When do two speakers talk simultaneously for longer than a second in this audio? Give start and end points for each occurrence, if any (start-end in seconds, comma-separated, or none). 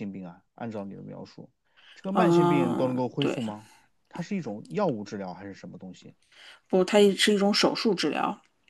2.1-3.4